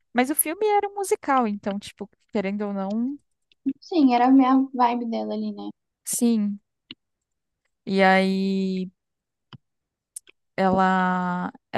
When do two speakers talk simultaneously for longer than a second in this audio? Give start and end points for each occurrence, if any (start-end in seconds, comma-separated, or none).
none